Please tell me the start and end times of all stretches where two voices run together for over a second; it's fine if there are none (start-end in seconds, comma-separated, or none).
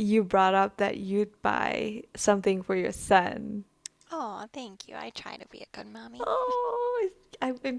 none